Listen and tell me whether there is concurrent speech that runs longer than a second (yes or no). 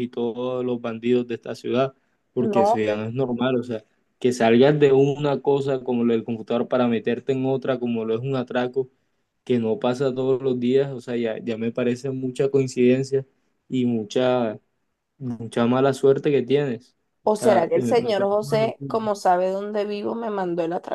yes